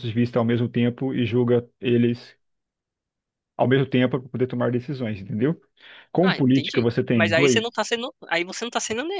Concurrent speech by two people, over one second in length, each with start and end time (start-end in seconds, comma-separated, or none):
6.2-7.6